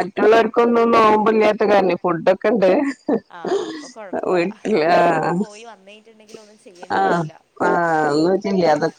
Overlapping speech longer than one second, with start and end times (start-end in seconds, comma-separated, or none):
none